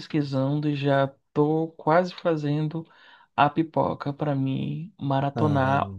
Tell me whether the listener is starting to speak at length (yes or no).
no